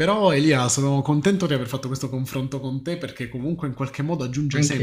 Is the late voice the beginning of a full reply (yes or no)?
no